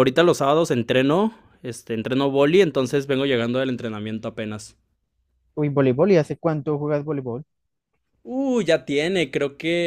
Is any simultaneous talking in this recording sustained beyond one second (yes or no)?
no